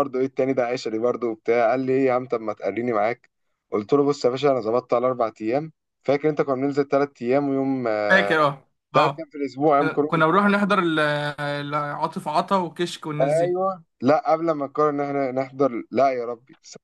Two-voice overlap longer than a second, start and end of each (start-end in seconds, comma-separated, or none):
none